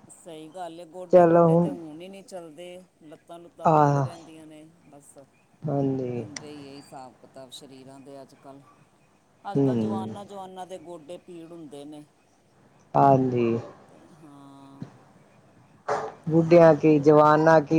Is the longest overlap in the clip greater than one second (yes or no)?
no